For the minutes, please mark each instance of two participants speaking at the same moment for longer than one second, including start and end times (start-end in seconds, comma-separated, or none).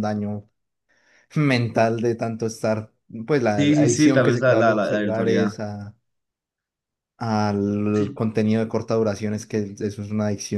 3.6-5.5